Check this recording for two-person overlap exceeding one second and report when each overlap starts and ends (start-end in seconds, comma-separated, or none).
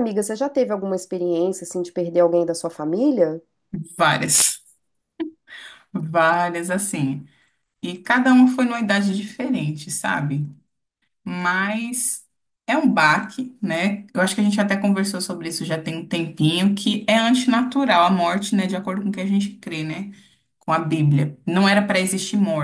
none